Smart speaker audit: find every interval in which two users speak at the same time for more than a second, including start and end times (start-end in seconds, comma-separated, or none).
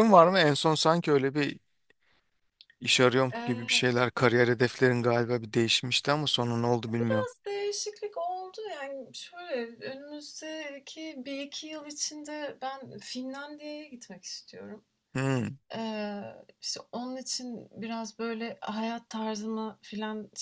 none